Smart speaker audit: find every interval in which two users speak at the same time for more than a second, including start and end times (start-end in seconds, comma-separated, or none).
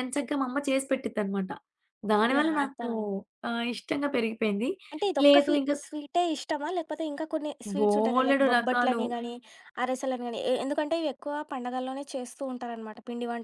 7.8-9.0